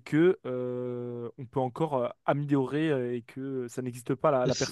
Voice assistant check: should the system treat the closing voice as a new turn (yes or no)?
yes